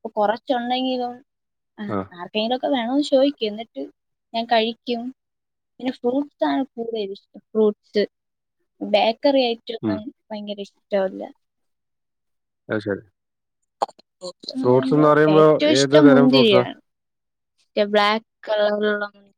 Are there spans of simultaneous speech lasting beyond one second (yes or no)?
no